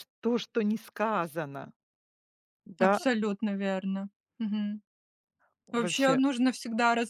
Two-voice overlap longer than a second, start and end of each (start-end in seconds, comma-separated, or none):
none